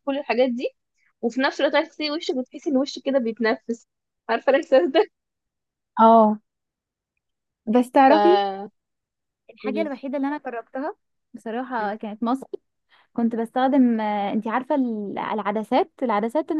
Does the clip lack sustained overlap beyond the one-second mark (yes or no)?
yes